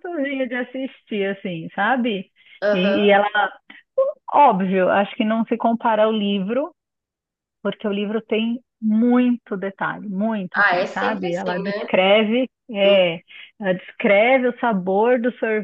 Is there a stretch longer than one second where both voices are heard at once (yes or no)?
yes